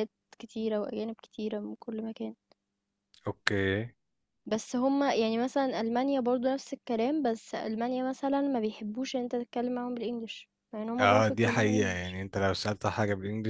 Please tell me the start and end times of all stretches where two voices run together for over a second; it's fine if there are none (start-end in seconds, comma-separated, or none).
10.9-12.2